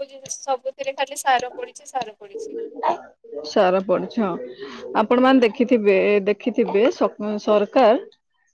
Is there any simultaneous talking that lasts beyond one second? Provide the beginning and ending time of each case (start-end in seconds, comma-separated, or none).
none